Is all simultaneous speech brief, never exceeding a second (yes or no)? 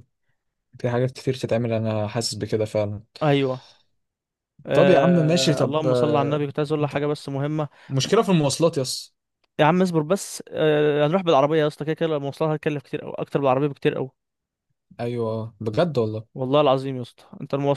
no